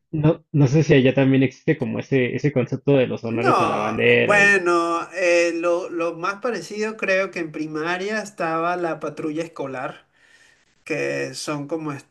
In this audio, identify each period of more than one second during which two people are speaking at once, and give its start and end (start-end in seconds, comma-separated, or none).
3.2-4.6